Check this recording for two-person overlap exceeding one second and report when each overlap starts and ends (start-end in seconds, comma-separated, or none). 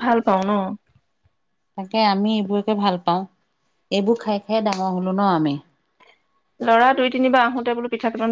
none